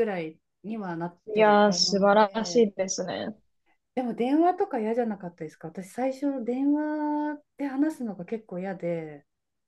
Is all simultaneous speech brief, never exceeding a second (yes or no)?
no